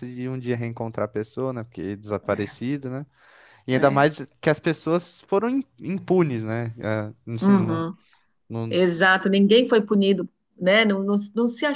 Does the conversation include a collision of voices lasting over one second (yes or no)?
no